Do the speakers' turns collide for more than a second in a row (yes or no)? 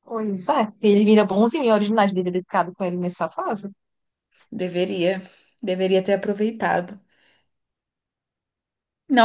no